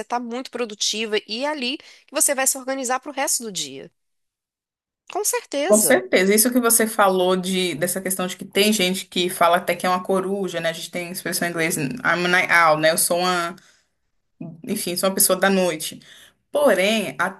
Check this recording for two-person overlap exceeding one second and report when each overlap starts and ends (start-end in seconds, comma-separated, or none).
none